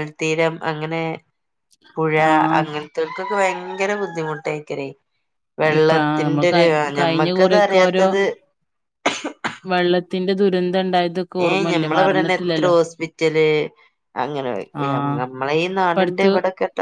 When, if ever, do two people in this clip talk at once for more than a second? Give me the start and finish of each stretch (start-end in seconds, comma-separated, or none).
5.8-8.1